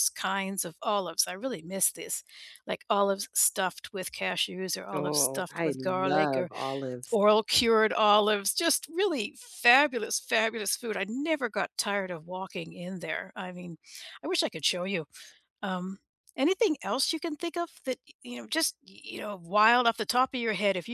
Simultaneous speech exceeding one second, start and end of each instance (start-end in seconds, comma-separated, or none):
4.9-6.5